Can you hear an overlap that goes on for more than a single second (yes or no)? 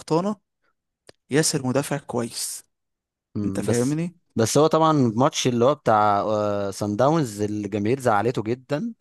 no